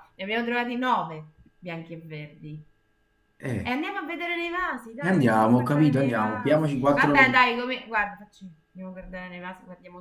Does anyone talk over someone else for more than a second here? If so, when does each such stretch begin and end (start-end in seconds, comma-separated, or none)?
5.0-7.4